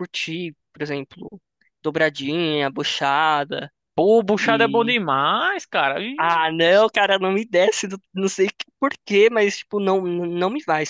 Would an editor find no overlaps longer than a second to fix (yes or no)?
yes